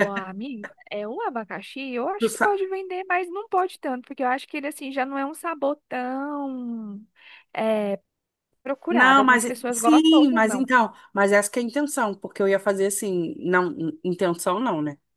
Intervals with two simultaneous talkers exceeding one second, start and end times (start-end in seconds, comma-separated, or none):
8.9-10.7